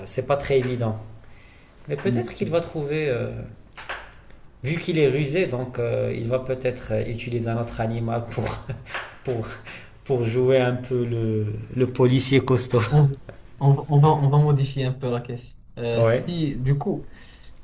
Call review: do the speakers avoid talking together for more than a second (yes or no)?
yes